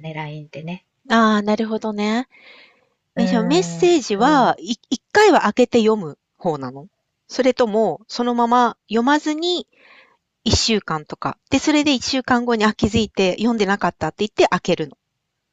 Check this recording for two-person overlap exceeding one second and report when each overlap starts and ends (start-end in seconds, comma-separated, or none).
3.1-4.6